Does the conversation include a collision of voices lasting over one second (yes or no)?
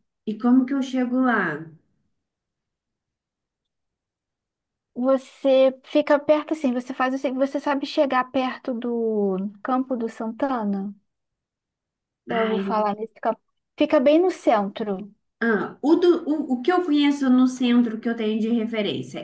no